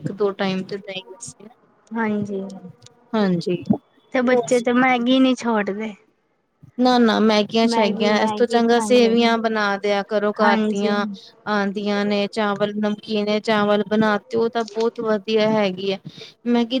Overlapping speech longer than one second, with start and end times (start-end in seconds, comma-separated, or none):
7.7-9.6